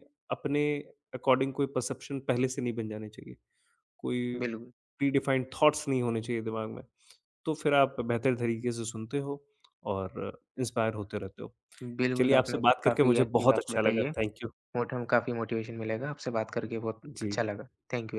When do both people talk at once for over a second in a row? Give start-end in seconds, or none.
12.2-14.1